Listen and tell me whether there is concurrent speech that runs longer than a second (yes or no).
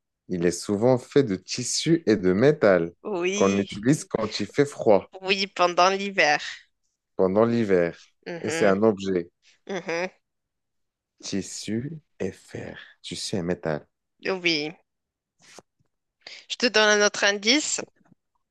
no